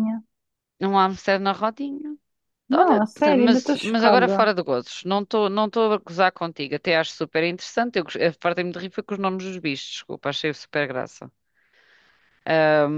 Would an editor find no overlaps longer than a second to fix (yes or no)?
no